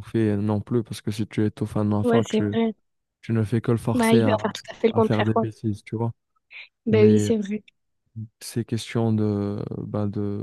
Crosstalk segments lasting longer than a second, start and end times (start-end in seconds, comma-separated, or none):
3.9-5.5